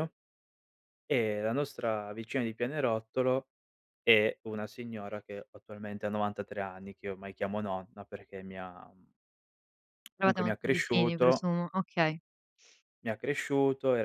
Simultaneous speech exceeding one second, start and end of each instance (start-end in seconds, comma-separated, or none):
10.2-11.4